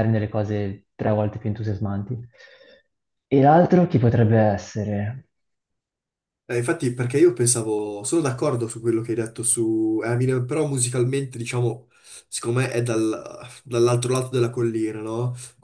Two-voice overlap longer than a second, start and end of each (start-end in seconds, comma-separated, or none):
none